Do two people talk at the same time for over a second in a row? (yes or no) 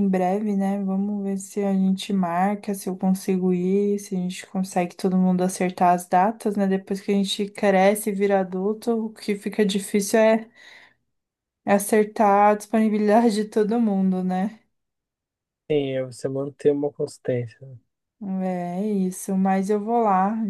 no